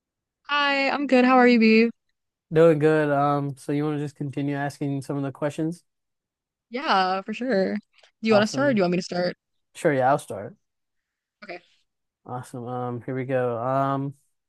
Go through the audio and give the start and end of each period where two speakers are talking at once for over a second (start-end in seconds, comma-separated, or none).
none